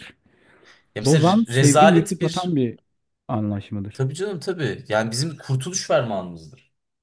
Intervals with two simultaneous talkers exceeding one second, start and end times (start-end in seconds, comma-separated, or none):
1.1-2.6